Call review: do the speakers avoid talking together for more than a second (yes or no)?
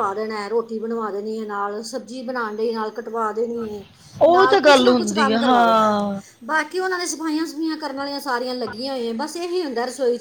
no